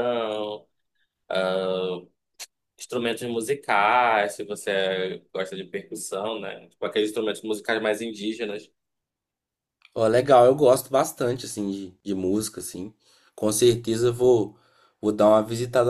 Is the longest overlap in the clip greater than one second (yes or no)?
no